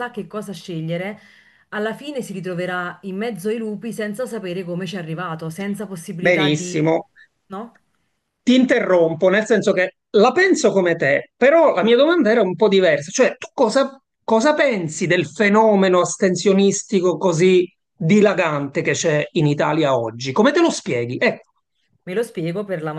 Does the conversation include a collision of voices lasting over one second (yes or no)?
no